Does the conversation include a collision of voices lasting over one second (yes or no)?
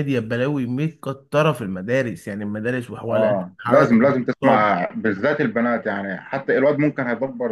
yes